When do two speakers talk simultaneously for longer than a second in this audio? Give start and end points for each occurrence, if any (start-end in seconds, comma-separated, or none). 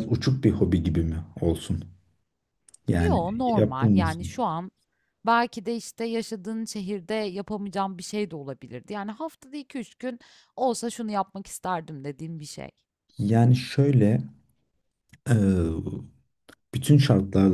3.0-4.5